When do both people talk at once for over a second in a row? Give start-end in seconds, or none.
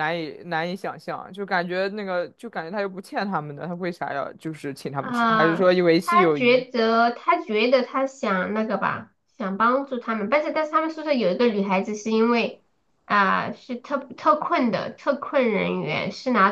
5.0-6.6